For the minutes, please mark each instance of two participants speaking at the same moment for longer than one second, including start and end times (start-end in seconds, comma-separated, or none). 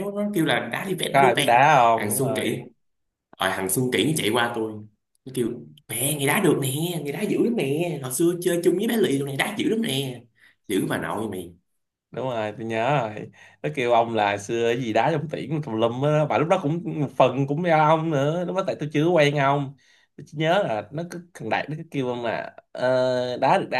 1.1-2.6